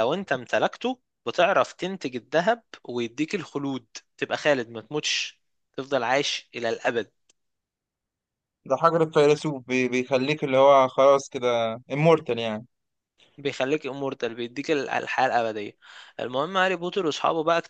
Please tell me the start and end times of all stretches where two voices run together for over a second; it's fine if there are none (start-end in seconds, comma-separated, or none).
none